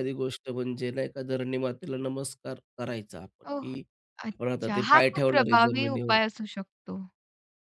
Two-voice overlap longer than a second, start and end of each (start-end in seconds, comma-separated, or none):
4.3-6.2